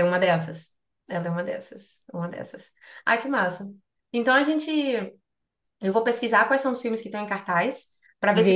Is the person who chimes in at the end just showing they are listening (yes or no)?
yes